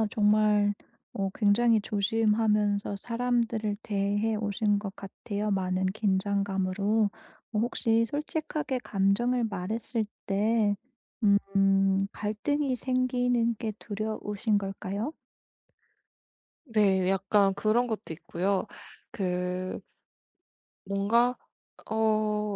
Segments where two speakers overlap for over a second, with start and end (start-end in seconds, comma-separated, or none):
none